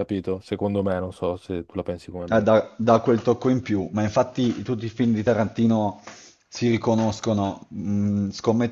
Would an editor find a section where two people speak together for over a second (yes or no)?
no